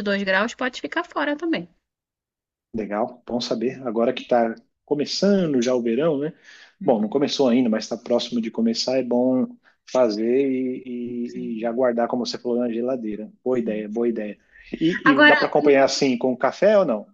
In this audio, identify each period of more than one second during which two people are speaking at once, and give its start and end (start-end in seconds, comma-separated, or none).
none